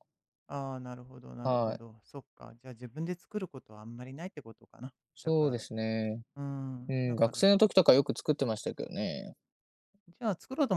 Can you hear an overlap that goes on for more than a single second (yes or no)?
no